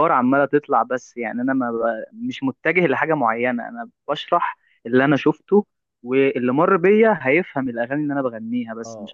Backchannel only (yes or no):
no